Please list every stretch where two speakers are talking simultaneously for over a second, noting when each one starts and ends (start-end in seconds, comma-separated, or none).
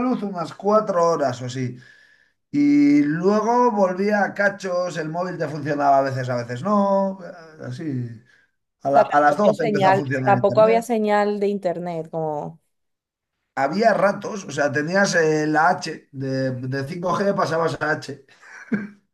9.0-10.9